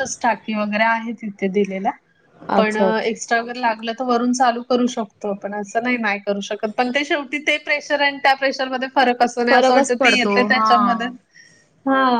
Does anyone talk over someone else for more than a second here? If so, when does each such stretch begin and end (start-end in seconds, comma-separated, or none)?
9.5-10.8